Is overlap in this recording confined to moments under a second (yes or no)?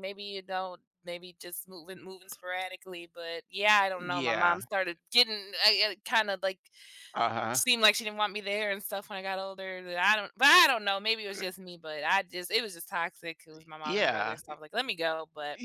yes